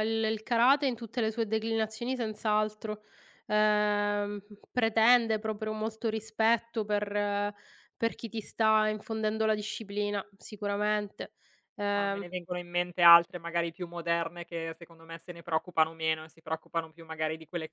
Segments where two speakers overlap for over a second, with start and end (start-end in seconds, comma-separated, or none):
none